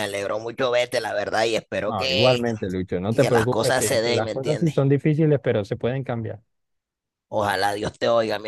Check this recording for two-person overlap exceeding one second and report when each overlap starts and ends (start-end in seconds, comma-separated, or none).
3.1-4.8